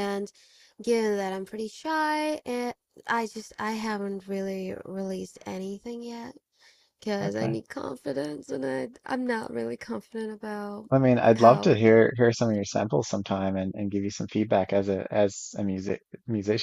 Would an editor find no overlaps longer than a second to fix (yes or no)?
yes